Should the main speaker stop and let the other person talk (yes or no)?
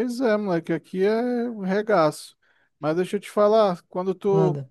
no